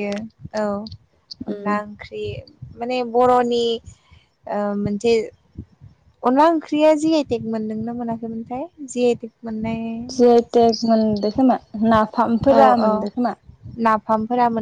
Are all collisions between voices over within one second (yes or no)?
yes